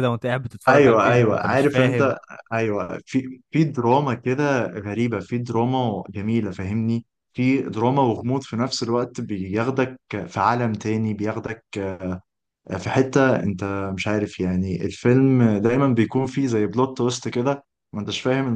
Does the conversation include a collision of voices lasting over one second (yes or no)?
yes